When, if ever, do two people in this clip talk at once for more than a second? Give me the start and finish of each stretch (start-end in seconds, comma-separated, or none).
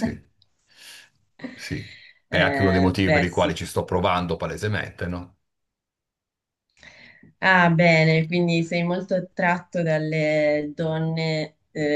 2.3-3.6